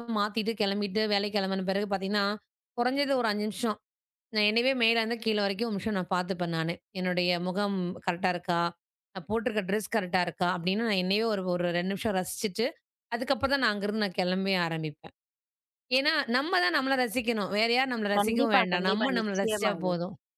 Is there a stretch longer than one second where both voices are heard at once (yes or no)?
yes